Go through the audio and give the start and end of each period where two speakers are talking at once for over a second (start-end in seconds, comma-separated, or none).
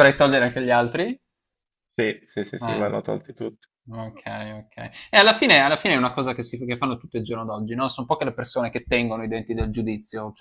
none